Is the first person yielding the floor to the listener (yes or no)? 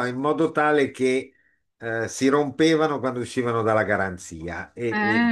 no